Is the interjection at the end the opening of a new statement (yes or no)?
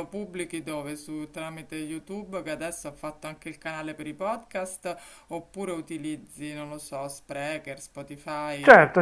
yes